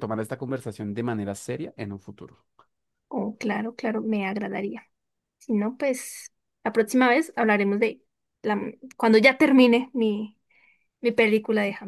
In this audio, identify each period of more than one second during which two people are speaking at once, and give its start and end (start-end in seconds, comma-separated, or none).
none